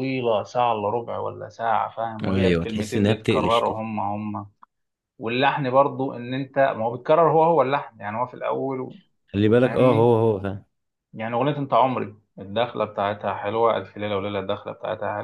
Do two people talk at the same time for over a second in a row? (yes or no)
yes